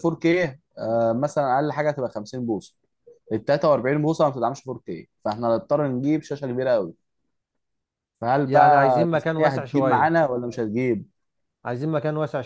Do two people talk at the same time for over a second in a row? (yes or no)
yes